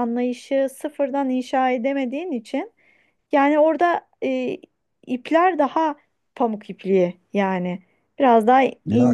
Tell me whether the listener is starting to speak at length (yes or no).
yes